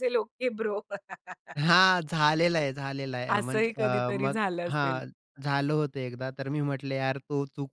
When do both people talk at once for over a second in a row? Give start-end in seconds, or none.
3.4-5.0